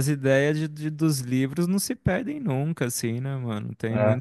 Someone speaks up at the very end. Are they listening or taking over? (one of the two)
listening